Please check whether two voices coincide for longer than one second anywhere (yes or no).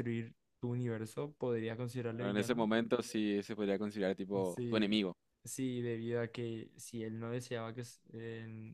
no